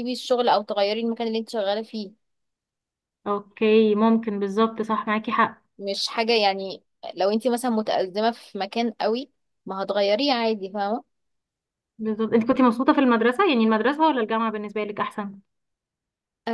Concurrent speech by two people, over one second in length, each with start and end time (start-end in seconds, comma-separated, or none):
none